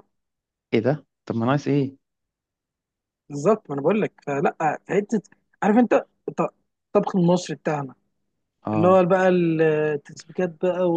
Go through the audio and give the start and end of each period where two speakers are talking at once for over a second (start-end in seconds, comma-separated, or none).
none